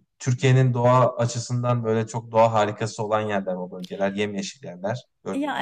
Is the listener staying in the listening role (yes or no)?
no